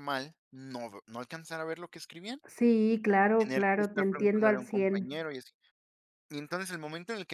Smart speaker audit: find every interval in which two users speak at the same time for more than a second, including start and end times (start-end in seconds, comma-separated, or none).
3.4-5.1